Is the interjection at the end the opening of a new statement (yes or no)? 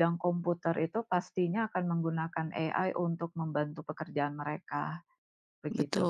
yes